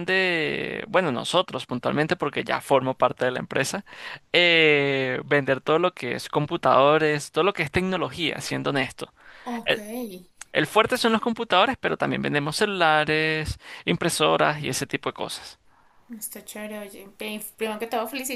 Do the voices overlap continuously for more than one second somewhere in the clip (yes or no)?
no